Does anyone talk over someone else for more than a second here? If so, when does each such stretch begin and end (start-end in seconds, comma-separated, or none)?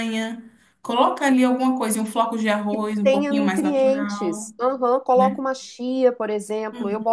2.7-4.5